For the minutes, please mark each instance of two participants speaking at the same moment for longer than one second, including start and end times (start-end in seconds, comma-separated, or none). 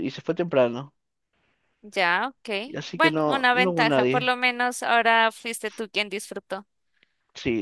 2.9-4.3